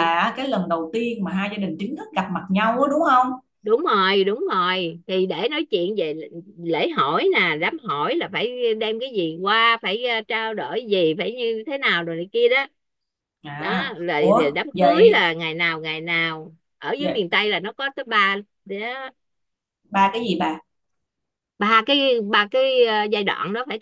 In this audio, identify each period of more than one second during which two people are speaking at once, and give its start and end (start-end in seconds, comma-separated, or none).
13.6-15.3